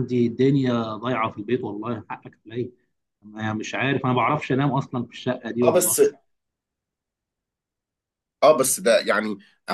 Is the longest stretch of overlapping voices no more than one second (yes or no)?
yes